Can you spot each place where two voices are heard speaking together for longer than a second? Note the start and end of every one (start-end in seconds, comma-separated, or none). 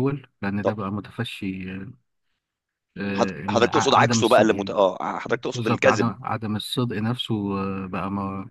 3.1-4.8